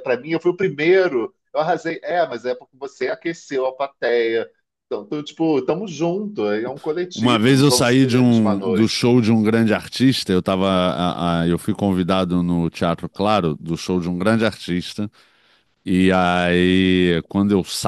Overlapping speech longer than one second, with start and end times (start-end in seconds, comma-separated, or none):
7.1-9.0